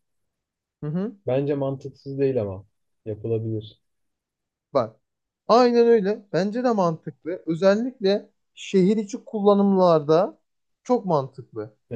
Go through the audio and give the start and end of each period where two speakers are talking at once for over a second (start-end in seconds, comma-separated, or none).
none